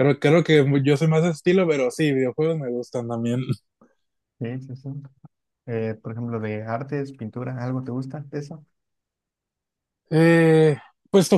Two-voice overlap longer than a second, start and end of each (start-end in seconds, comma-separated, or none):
none